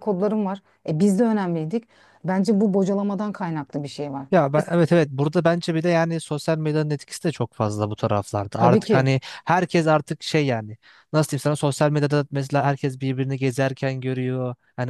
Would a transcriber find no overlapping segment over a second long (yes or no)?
yes